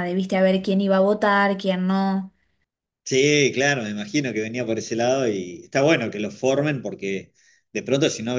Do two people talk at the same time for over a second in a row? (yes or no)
no